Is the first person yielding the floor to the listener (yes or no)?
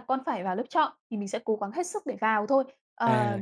no